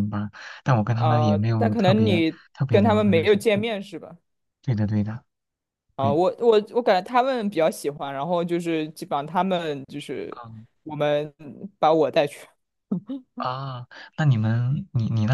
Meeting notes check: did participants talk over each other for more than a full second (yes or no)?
yes